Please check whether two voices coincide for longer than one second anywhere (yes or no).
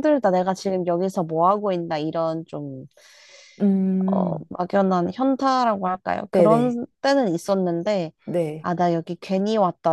no